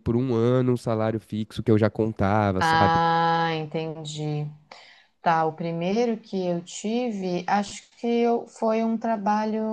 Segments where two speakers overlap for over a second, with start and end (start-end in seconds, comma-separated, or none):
none